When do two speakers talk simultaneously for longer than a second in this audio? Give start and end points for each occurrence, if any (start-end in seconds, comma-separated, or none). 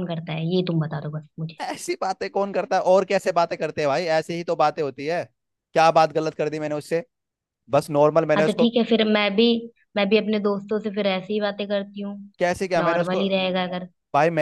none